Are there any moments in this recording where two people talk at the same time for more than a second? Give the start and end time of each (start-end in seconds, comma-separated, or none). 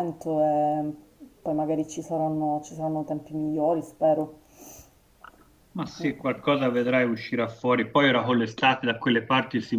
none